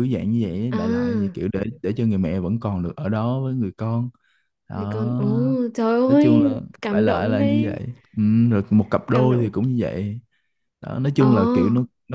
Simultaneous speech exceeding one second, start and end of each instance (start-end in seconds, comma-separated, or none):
6.1-7.8